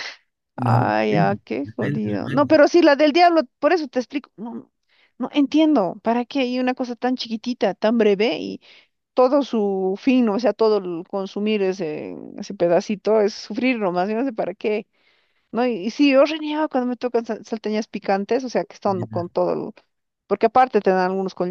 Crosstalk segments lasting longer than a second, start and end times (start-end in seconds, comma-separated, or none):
0.6-2.6